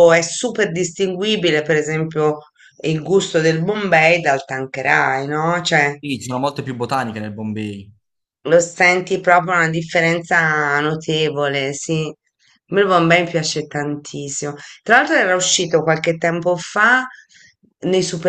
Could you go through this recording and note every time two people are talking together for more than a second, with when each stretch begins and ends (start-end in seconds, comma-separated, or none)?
none